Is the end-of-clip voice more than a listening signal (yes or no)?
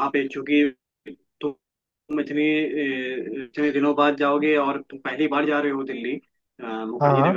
no